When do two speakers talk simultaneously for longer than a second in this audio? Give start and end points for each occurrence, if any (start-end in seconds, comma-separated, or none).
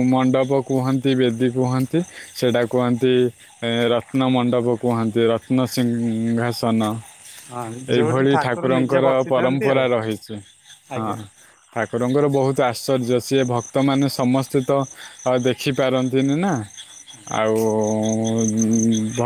8.0-9.8